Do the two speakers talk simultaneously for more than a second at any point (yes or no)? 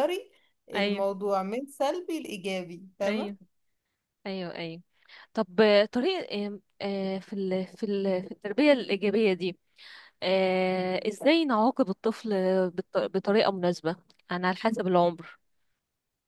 no